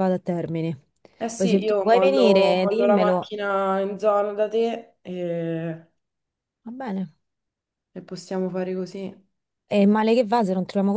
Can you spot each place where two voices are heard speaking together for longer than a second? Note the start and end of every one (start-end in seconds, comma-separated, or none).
1.3-3.3